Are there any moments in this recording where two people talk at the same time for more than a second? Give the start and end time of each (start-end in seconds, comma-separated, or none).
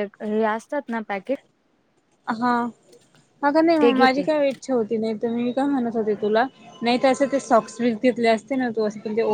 none